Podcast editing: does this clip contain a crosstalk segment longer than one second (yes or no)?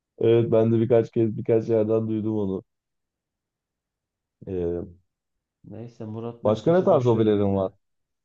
yes